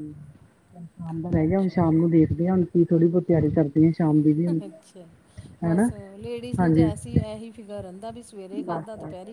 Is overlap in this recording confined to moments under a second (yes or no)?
yes